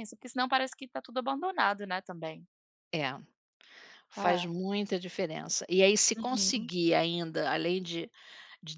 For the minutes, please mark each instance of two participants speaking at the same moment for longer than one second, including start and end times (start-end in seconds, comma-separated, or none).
none